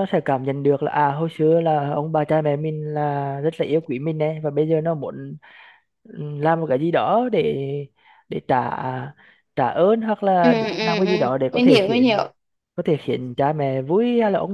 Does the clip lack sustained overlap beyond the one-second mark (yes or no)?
no